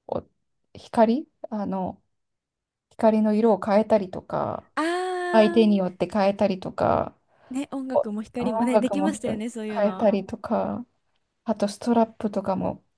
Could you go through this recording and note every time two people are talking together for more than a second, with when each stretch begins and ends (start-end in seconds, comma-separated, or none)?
7.9-10.1